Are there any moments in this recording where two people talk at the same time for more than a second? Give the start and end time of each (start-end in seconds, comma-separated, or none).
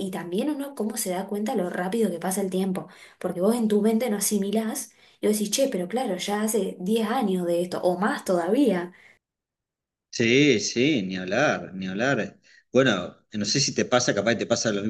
none